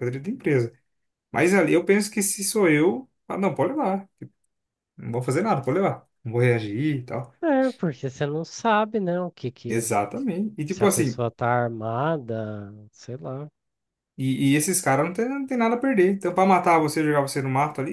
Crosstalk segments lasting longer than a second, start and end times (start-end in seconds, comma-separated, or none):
none